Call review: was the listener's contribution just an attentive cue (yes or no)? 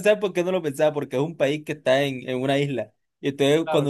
yes